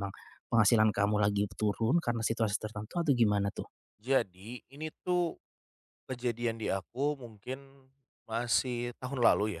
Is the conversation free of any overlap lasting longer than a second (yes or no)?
yes